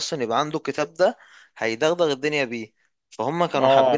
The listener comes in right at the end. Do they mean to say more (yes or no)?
yes